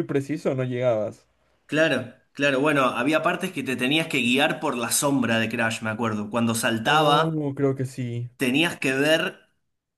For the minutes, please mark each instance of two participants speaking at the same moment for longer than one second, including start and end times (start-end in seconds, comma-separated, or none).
none